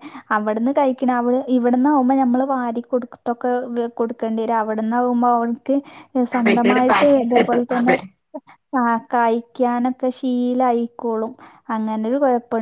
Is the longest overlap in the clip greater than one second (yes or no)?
yes